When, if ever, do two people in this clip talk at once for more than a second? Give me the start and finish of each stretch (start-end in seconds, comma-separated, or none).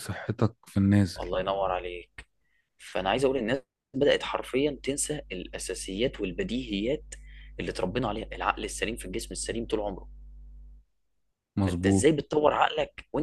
none